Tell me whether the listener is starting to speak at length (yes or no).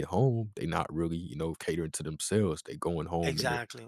no